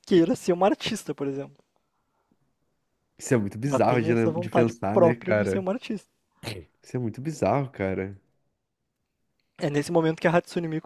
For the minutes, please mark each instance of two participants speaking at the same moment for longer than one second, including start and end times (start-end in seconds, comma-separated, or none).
3.6-5.7